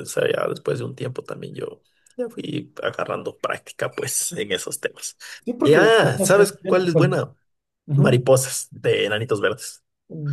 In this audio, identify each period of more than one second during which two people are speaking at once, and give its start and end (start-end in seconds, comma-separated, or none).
5.6-7.1